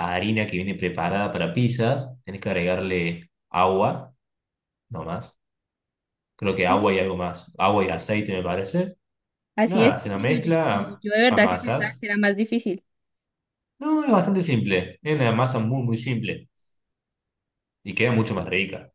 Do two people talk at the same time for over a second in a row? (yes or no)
yes